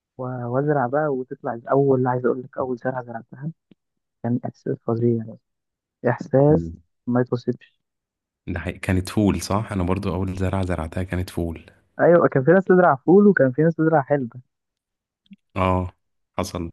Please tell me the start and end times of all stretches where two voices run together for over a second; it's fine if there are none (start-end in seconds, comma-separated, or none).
none